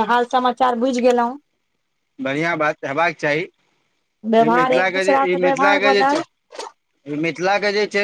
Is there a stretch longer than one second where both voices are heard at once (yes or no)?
yes